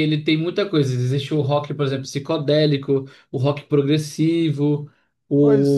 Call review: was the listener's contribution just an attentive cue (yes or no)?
yes